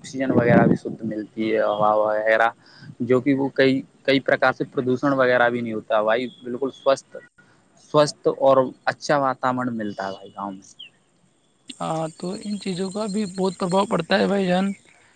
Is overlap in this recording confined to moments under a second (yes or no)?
yes